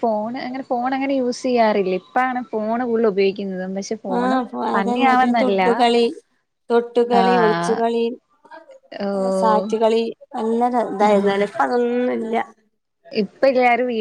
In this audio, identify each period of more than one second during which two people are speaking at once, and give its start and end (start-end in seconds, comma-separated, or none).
none